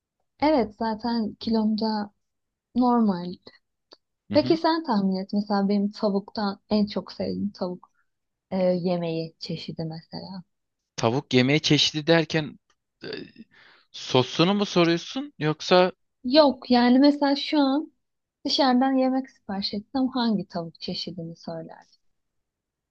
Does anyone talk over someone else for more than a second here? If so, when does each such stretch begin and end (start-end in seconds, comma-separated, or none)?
none